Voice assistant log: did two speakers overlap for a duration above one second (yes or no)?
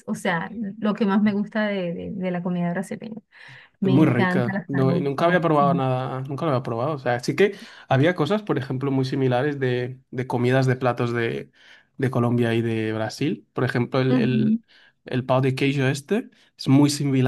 yes